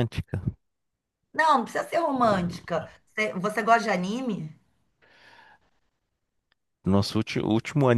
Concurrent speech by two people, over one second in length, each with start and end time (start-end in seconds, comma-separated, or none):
none